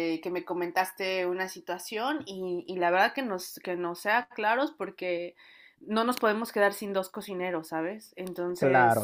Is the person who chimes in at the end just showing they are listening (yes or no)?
no